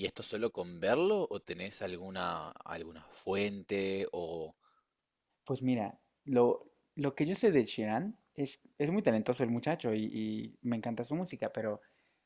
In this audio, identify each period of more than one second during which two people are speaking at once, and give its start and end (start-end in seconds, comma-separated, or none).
none